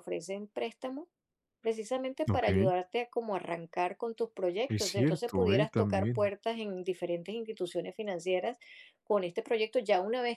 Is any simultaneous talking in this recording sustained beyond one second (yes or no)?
yes